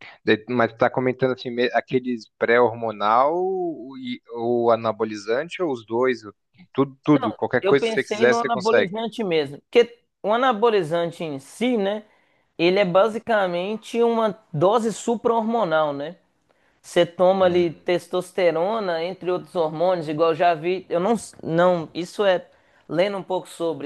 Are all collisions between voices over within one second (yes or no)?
no